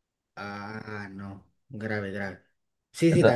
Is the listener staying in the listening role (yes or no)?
yes